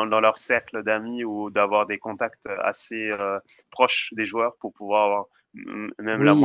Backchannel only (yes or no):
no